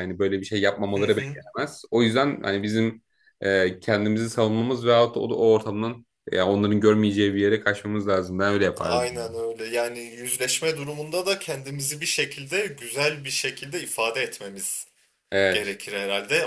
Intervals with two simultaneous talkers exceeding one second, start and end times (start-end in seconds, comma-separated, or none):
none